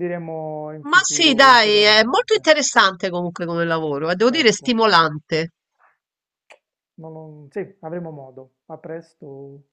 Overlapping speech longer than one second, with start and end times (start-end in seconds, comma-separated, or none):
0.8-2.5